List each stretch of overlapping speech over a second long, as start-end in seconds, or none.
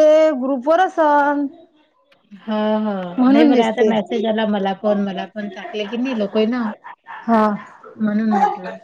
none